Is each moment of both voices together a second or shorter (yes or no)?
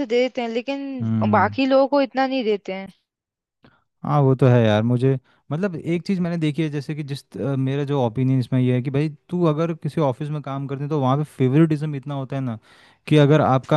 yes